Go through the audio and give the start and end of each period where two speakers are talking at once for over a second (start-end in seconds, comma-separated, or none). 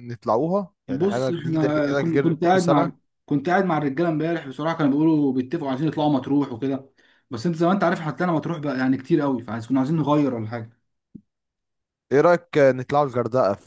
0.9-2.9